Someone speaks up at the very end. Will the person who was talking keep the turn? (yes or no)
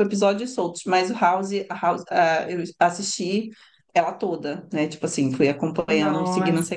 no